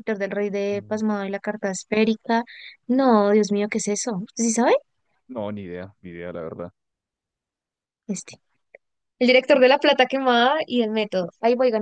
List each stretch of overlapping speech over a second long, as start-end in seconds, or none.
none